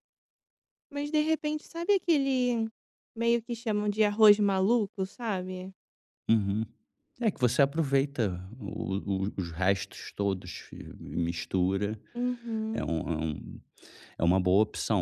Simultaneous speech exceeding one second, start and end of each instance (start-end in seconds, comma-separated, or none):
none